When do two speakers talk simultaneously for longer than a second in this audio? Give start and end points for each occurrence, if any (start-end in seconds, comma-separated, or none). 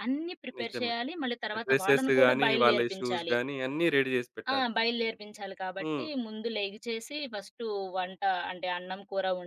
1.6-3.3